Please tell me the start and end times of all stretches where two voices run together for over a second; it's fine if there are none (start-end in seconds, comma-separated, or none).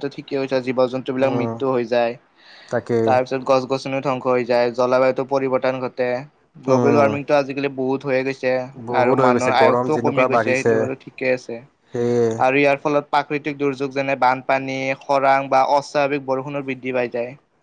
9.0-10.7